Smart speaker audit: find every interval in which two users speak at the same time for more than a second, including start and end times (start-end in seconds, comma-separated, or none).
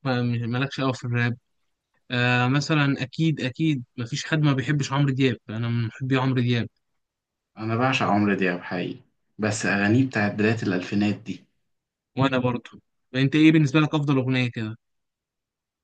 none